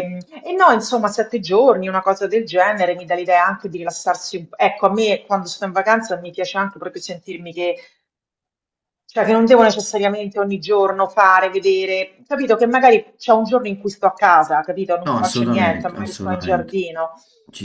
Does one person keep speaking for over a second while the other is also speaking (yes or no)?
yes